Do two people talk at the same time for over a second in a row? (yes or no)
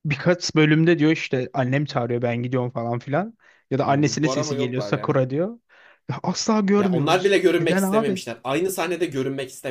yes